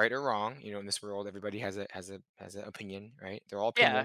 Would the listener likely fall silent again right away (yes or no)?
no